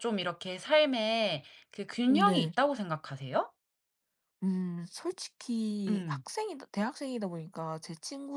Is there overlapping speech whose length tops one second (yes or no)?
no